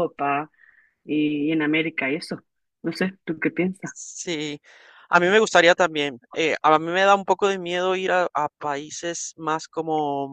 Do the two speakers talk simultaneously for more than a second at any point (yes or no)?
no